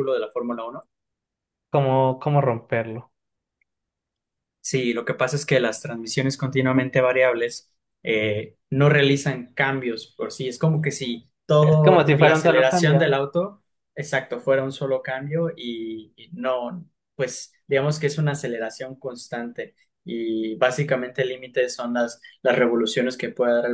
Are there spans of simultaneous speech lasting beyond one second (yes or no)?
yes